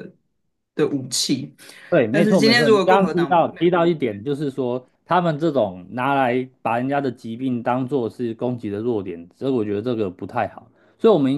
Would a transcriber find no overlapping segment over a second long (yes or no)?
no